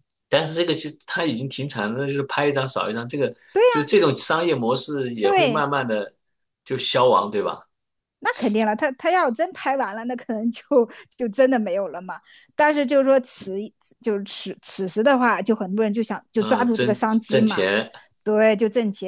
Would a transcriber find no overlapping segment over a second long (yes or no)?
no